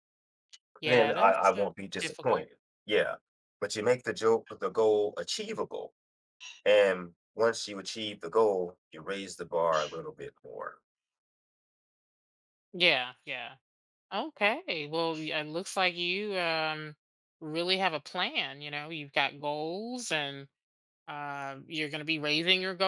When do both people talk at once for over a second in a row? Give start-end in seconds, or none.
0.8-2.5